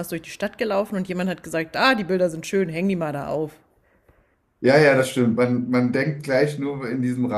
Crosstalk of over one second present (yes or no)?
no